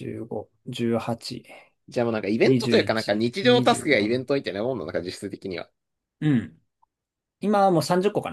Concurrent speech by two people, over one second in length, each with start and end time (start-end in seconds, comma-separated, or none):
2.4-4.3